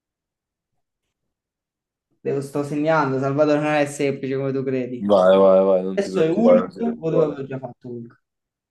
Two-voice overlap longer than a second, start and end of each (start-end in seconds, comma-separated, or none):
5.9-7.5